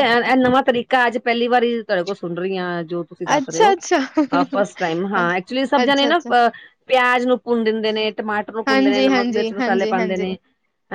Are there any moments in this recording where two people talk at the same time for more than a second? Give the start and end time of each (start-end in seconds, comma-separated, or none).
8.7-10.3